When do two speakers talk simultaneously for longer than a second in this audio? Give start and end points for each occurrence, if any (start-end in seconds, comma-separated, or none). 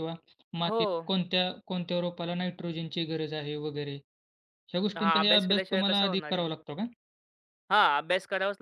5.0-6.5